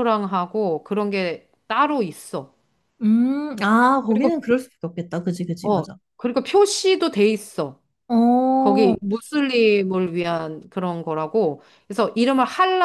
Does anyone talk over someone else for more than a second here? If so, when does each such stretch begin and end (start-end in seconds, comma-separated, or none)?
none